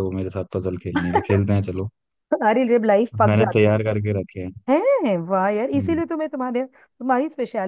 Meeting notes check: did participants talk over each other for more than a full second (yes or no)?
no